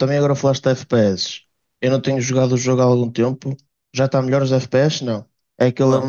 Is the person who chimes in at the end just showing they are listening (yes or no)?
yes